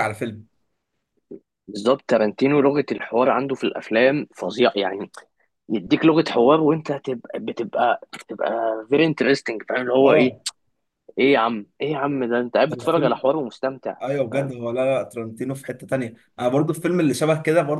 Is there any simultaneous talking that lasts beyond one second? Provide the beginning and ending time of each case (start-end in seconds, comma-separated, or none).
none